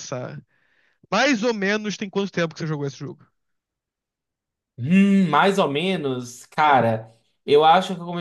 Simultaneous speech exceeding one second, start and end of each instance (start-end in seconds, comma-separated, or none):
none